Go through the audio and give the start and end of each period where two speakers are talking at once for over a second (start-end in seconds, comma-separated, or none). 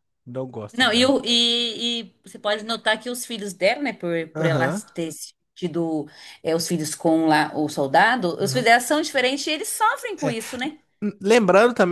none